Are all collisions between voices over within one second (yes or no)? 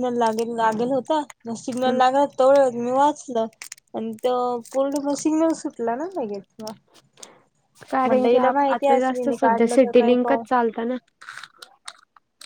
no